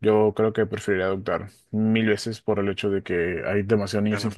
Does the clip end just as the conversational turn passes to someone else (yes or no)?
no